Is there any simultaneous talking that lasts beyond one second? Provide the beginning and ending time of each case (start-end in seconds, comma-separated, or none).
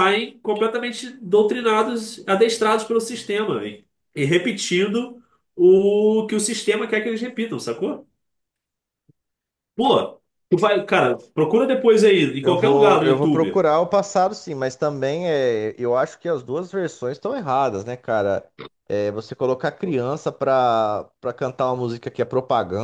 12.4-13.7